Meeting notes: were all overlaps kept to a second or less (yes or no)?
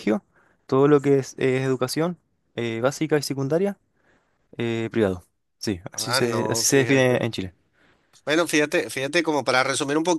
no